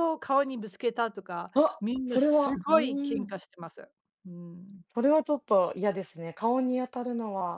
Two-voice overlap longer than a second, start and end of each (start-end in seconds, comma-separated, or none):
1.5-3.3